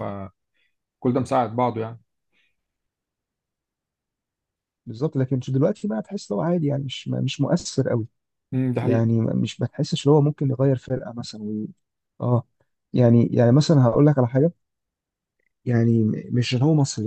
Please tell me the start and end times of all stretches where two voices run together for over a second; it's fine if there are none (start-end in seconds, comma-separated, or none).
none